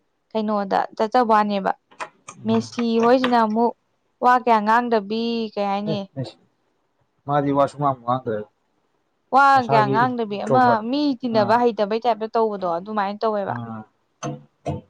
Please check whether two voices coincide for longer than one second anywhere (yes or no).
no